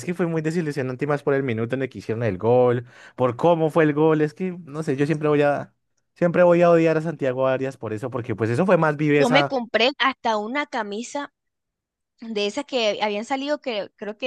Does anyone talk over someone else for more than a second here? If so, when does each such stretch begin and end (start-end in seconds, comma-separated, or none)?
none